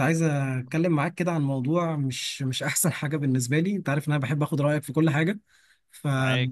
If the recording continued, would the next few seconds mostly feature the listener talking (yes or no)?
no